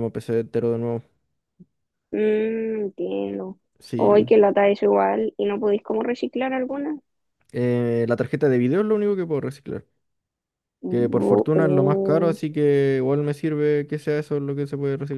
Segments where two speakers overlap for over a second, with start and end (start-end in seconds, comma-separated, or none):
10.9-12.4